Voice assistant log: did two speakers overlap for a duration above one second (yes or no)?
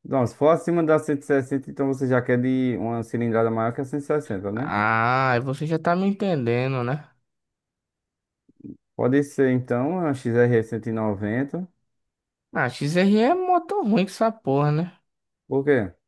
no